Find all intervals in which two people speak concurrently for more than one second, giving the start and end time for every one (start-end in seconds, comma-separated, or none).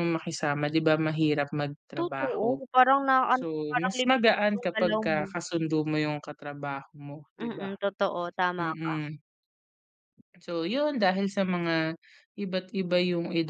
3.3-5.3